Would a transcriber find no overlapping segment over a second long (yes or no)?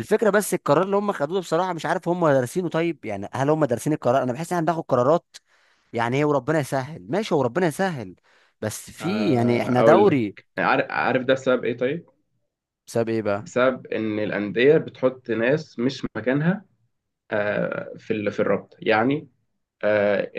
no